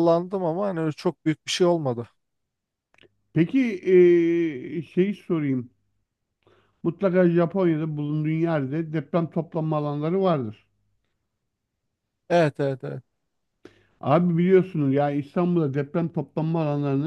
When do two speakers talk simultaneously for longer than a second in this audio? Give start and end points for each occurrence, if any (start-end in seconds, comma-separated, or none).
none